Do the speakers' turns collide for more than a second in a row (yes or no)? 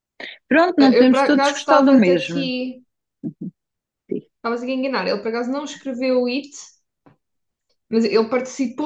yes